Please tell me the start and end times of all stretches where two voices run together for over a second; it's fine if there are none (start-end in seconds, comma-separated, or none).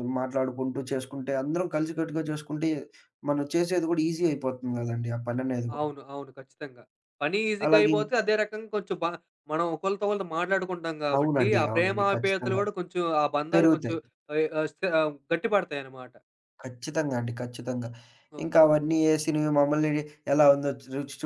11.2-12.6